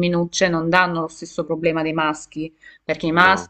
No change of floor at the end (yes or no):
yes